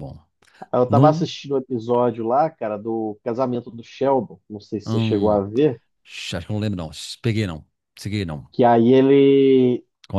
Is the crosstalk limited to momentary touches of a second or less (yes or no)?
yes